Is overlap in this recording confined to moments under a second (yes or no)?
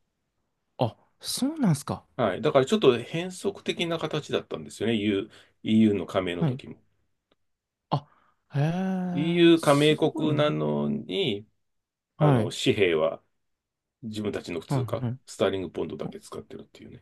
no